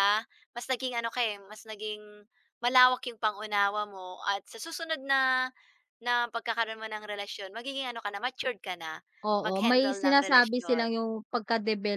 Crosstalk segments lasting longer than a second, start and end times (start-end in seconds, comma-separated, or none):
9.4-10.9